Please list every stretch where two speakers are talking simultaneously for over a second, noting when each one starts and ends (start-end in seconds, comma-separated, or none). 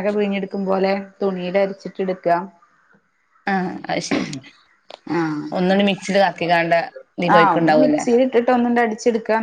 none